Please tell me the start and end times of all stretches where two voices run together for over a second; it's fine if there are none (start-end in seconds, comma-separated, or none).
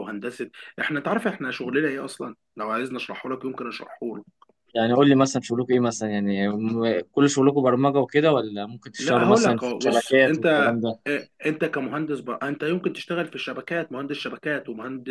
9.0-11.0